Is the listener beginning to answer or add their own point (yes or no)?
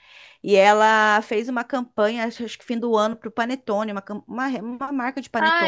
yes